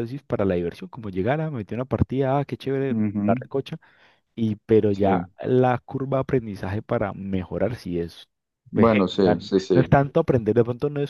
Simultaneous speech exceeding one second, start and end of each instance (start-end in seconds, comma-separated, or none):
8.7-10.0